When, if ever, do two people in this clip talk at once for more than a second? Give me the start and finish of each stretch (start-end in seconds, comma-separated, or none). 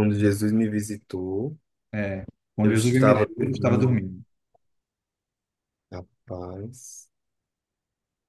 2.6-4.0